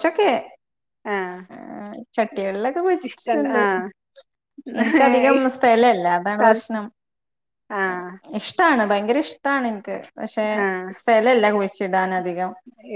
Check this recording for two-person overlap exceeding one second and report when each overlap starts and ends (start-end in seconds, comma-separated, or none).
none